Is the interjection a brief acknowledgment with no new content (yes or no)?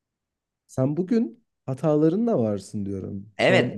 no